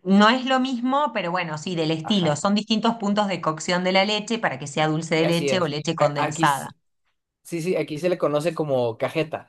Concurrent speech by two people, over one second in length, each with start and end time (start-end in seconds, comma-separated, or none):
5.2-6.7